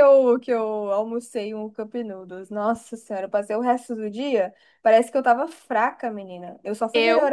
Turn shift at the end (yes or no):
no